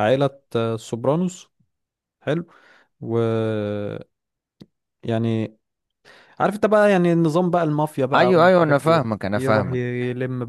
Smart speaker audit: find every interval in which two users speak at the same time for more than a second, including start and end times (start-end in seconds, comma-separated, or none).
8.2-9.8